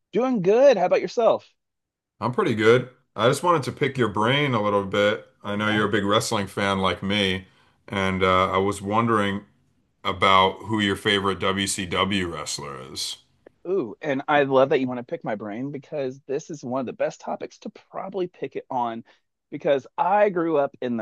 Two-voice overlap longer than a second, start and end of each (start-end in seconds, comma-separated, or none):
none